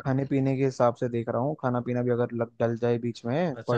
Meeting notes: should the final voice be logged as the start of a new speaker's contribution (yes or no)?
yes